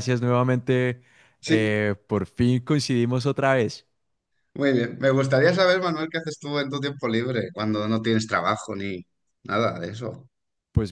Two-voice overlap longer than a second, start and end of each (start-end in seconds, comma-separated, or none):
none